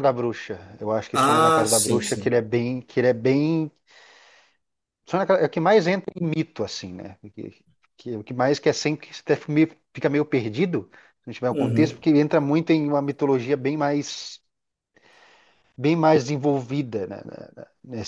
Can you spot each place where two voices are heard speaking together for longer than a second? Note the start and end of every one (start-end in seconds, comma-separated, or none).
1.1-2.4